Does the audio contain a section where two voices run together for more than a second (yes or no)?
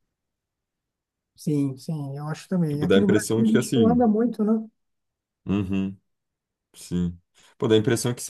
yes